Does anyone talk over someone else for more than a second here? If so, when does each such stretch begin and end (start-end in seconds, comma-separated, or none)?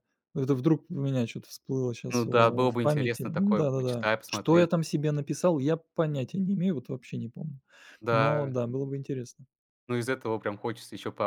2.1-4.7